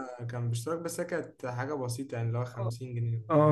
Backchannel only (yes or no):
no